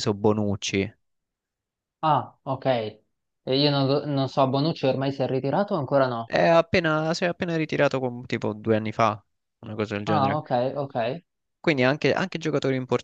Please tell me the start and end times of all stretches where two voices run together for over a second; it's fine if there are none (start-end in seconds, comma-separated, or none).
none